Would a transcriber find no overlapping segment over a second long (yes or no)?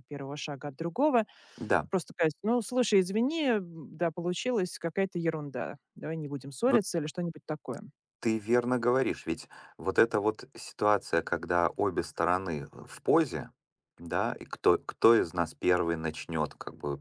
yes